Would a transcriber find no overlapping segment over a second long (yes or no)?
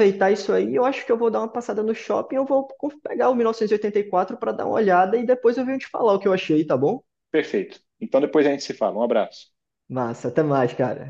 yes